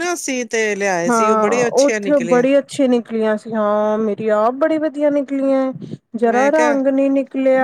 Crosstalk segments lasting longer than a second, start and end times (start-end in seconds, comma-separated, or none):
1.1-2.5